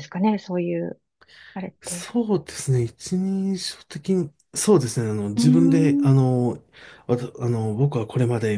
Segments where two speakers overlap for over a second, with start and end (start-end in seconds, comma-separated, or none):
none